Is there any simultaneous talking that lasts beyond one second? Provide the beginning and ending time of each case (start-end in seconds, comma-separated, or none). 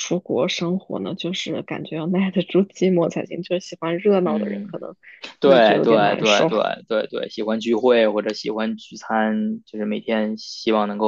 5.4-6.7